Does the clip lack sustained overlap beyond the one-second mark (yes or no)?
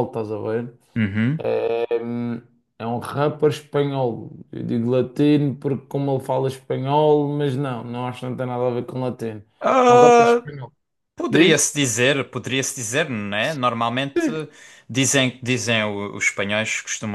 yes